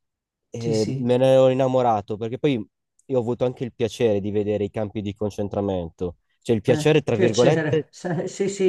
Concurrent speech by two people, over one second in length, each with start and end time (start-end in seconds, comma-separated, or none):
6.7-7.9